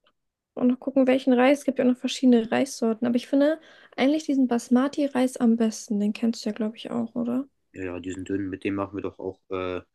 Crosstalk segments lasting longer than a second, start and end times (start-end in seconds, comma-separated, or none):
none